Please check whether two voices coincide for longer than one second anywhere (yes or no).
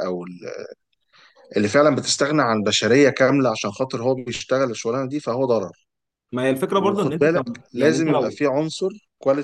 yes